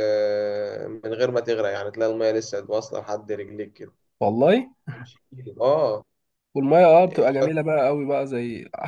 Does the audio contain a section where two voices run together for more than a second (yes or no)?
no